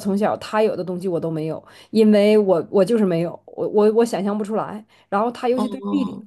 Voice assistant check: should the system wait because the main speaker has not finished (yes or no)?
yes